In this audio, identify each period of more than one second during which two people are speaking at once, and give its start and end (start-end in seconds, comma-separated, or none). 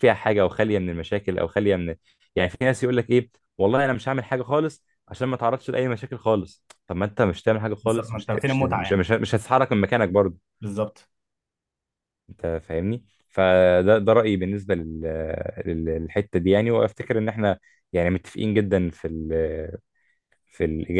7.8-9.0